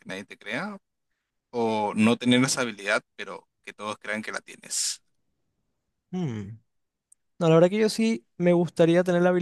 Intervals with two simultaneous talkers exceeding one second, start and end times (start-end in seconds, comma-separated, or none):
none